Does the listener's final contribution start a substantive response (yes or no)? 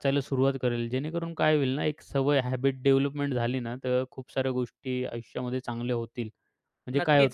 yes